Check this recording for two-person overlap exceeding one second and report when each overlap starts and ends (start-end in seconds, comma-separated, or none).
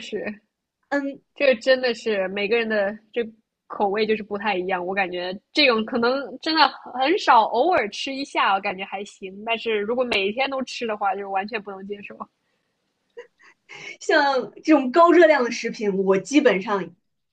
none